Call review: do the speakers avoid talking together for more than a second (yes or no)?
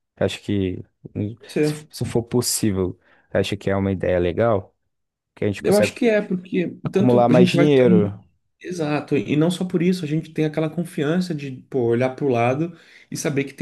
no